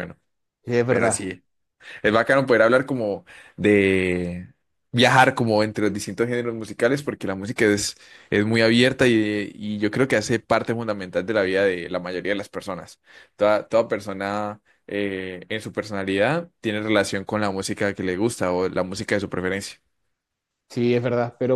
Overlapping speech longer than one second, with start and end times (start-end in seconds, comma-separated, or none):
none